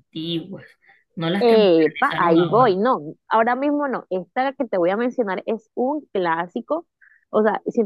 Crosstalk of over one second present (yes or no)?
yes